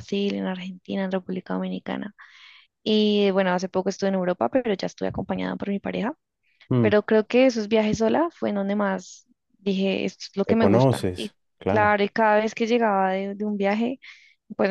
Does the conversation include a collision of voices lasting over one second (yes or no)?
yes